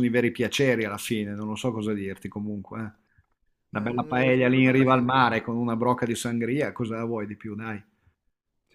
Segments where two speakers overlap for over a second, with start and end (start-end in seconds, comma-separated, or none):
3.7-5.4